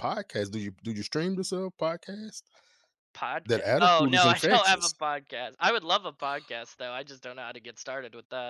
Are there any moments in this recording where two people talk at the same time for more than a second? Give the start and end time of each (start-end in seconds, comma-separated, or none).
3.5-4.9